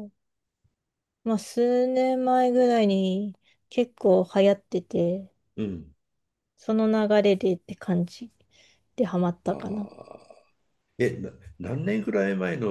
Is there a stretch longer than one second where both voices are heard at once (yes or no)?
no